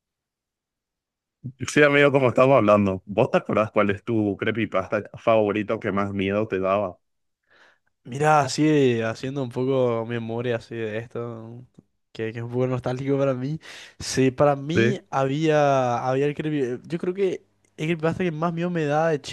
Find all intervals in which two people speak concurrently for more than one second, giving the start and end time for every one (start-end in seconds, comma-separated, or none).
none